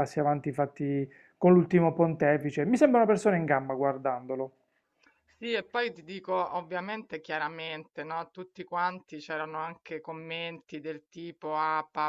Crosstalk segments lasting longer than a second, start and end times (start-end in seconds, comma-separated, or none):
none